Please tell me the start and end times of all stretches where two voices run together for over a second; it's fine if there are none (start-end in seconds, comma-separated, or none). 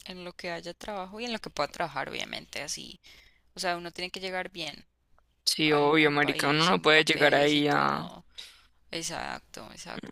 5.6-8.1